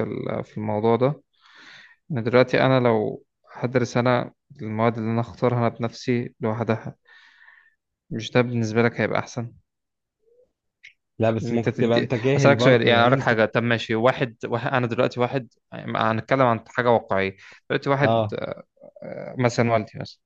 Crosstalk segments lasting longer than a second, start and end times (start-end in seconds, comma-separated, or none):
11.4-13.3